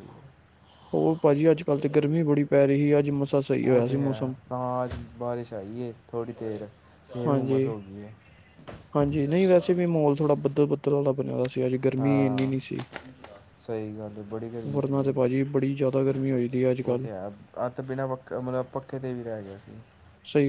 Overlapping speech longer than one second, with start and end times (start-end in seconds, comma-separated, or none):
none